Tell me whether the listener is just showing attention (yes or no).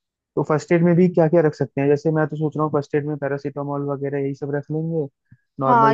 no